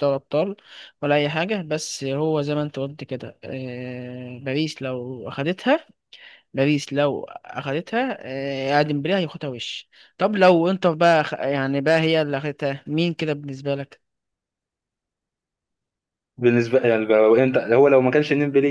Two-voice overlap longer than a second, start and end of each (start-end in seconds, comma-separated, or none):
none